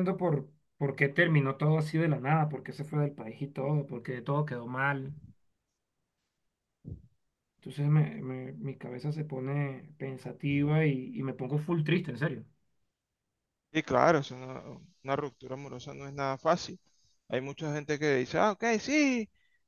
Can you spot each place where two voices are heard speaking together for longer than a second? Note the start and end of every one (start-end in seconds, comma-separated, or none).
none